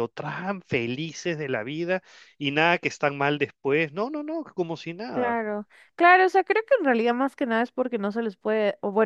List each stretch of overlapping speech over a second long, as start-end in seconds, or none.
none